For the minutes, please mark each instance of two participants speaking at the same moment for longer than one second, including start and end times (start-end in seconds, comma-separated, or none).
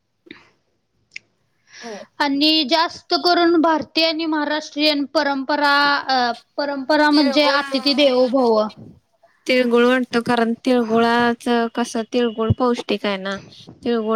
none